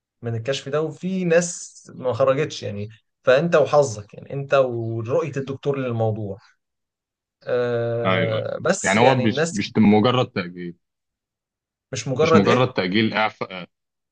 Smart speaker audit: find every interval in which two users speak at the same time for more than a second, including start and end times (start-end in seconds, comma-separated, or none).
8.0-10.1